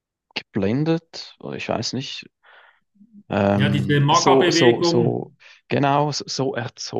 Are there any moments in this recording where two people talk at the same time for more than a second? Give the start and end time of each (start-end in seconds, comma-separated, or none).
3.5-5.2